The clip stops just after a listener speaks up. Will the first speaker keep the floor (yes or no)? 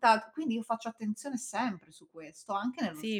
no